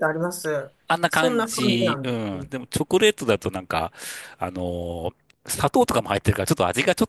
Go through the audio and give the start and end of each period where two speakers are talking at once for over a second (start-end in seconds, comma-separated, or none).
1.1-2.5